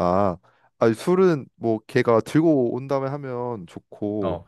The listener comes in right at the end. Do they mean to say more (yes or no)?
no